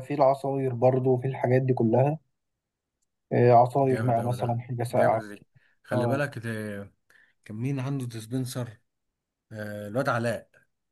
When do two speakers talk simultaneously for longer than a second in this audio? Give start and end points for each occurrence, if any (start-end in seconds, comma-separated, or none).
3.8-5.2